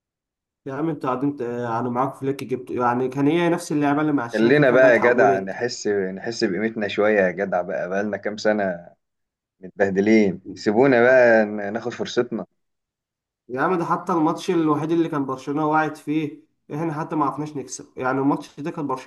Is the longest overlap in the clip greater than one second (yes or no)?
yes